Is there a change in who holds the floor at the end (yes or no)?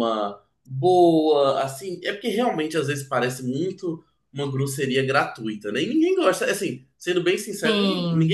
no